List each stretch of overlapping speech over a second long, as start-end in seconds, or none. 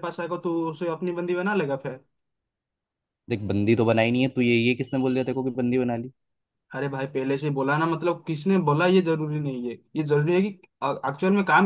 none